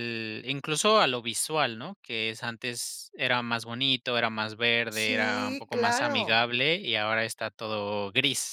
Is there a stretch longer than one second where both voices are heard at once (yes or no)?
yes